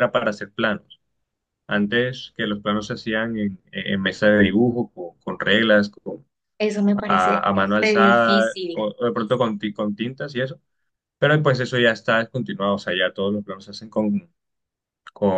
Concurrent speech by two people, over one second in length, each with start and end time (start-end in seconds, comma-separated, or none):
7.1-8.9